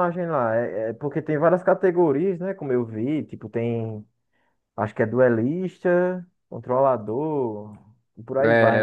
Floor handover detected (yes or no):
yes